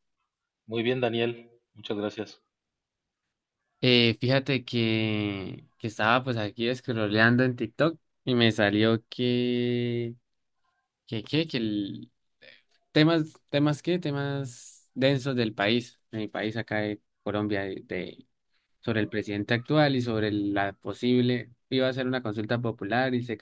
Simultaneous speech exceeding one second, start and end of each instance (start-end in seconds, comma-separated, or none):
none